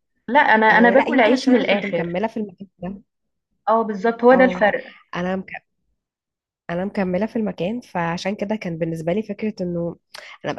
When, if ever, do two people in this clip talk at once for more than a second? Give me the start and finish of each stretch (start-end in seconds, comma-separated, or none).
0.7-2.2